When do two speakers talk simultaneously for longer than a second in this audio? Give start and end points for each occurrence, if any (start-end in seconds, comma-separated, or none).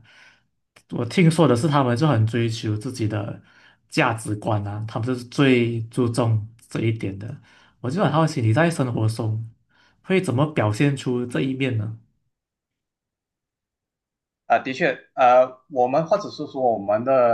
none